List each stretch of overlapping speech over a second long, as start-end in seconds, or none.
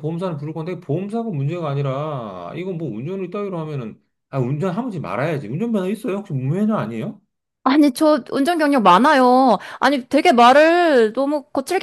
none